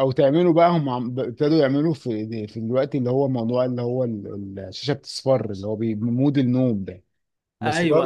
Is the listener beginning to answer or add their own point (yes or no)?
no